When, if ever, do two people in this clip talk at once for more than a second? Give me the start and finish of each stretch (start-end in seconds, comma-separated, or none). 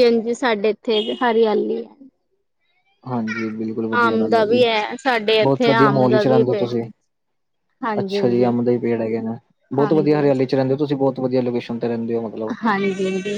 5.4-6.7